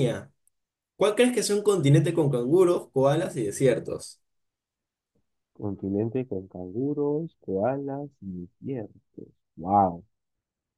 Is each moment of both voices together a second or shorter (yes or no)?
yes